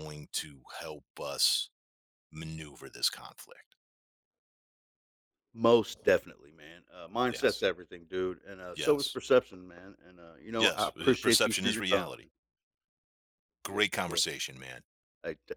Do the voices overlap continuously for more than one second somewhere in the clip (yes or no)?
yes